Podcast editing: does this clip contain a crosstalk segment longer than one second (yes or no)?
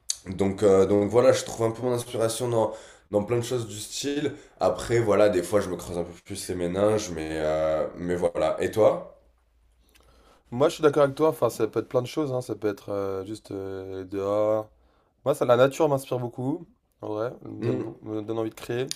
no